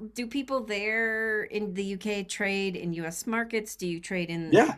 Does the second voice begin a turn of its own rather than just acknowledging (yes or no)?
yes